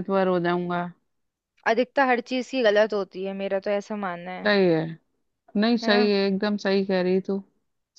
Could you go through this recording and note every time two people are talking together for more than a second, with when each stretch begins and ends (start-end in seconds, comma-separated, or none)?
none